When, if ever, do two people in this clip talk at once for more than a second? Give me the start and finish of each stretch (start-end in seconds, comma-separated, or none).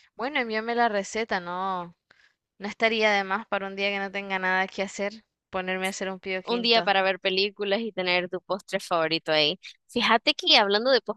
none